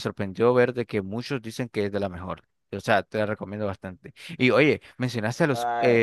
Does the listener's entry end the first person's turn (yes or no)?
no